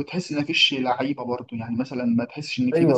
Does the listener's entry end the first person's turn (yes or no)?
yes